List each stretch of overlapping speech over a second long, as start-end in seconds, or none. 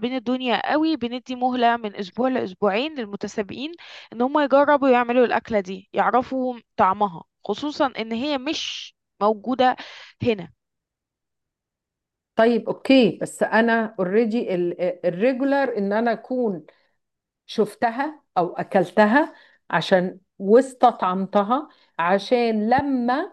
none